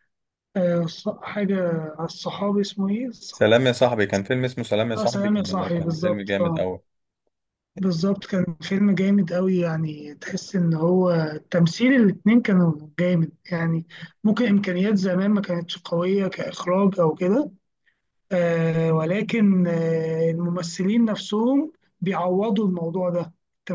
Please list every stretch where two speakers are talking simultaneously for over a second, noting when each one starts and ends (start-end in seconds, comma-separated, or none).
5.0-6.7